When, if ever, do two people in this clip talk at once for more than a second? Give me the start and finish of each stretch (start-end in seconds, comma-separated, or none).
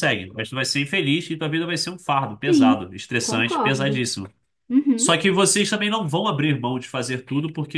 2.4-4.1